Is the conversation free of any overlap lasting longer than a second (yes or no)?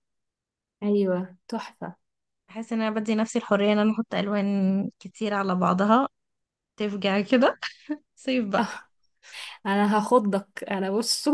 yes